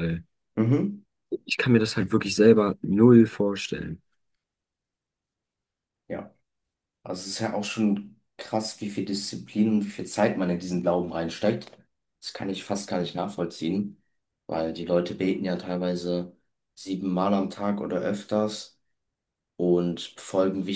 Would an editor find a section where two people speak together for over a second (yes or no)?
no